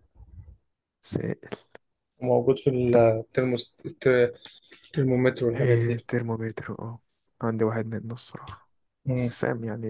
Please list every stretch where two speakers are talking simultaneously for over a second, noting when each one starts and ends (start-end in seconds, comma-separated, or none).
none